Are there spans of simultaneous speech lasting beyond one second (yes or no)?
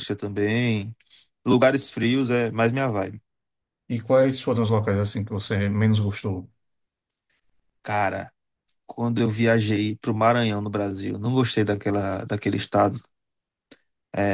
no